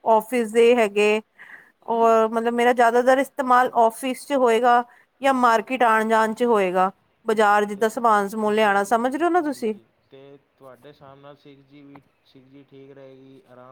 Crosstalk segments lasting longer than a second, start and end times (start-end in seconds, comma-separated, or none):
none